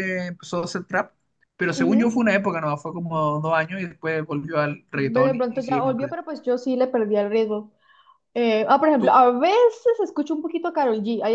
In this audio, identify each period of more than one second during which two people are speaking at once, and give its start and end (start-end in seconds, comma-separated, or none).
5.0-6.2